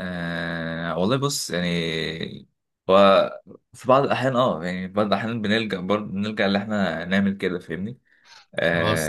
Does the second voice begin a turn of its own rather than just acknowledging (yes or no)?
no